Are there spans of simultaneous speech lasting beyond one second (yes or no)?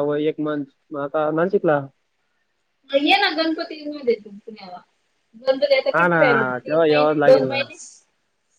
yes